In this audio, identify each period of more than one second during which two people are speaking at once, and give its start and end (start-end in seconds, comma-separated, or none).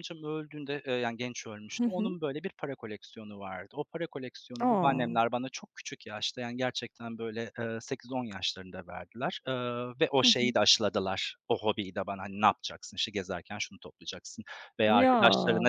none